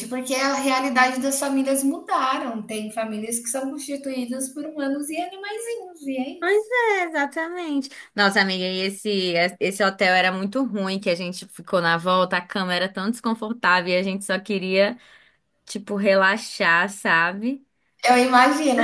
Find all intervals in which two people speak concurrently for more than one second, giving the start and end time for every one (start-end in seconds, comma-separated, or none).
none